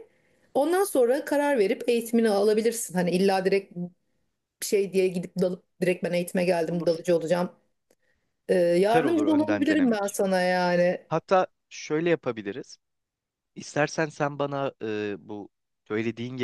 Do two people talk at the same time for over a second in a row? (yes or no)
yes